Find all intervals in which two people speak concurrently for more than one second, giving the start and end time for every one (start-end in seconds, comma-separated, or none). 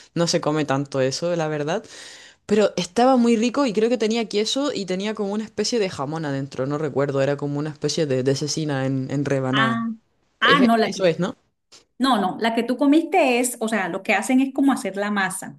none